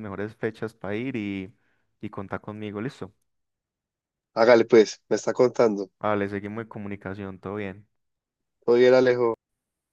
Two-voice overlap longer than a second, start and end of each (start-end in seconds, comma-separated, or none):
none